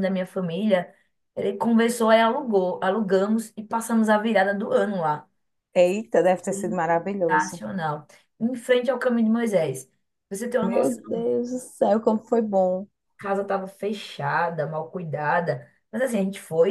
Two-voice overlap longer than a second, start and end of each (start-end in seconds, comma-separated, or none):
none